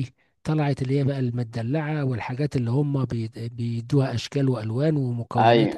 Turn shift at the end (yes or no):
no